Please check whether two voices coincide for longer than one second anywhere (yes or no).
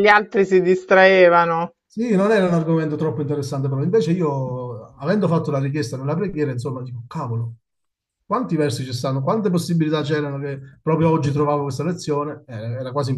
no